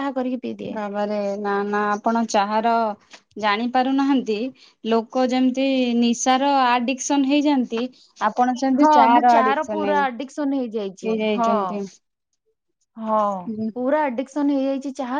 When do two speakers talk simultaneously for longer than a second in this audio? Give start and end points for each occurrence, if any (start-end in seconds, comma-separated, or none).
8.8-11.5